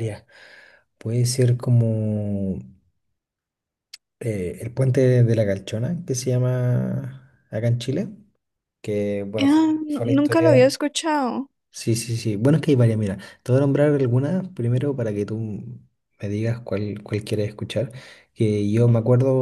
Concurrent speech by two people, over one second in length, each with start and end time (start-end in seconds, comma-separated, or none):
9.4-10.7